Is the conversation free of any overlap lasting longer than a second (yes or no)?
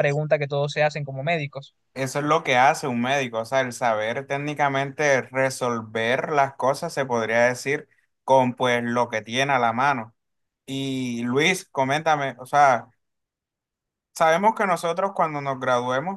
yes